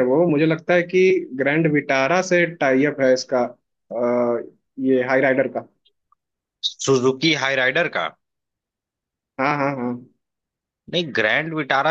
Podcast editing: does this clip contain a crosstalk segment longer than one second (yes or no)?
no